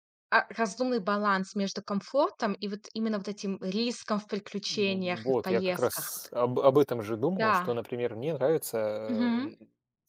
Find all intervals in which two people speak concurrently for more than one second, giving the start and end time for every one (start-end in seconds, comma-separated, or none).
4.7-6.3